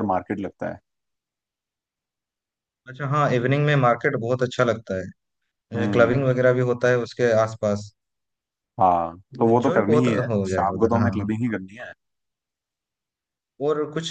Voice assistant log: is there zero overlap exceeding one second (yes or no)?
no